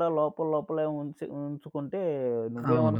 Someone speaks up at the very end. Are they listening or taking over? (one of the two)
taking over